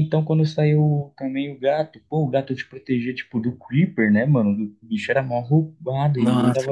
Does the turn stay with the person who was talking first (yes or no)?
no